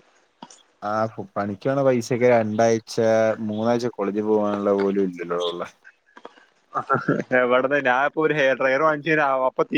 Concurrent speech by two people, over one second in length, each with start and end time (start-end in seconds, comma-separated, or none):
none